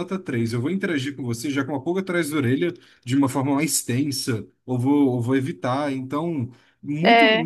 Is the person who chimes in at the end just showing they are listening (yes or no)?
yes